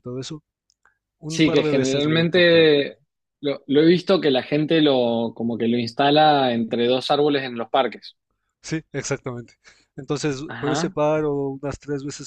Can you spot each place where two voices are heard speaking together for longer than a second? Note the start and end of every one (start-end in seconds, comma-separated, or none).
1.3-2.7